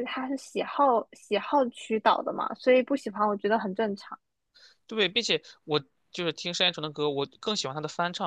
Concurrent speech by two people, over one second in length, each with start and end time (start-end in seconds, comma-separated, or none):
none